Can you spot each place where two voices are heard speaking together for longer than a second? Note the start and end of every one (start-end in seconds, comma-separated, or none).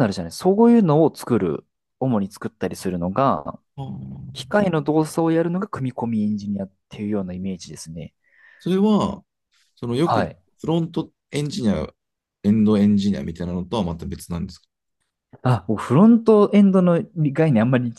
none